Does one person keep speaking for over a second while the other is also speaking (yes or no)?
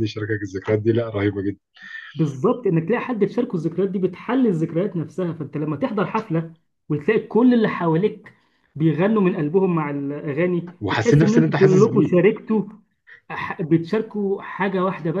yes